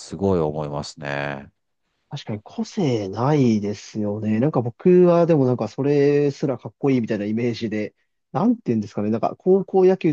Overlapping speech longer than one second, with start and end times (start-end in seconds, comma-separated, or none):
none